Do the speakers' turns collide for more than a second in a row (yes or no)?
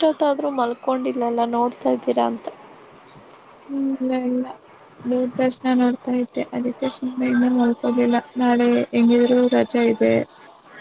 no